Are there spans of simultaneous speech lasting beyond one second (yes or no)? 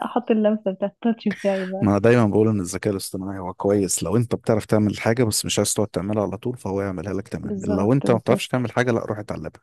yes